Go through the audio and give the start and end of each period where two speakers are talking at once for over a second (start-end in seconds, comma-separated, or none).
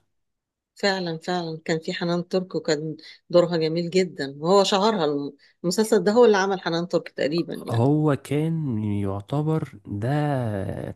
none